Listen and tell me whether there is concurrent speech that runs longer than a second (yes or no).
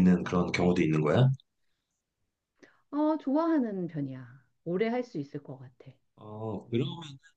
no